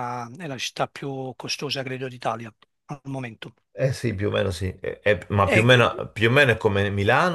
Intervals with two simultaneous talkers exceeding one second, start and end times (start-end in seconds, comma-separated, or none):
none